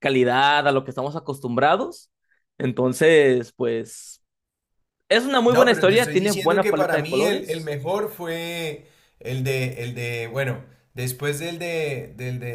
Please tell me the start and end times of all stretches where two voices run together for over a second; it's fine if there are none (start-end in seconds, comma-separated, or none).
5.5-7.7